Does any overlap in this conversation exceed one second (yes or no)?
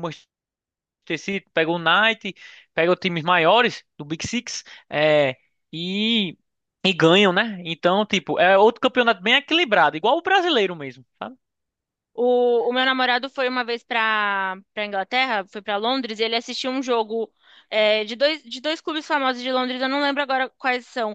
no